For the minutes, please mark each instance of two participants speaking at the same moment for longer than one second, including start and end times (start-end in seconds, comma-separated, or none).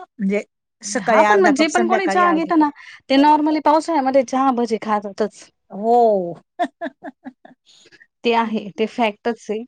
1.0-2.6